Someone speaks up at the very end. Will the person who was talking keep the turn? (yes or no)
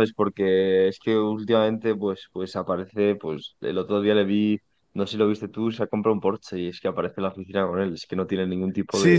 no